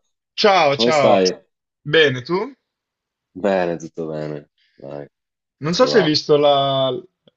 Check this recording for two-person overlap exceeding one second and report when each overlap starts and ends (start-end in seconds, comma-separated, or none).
none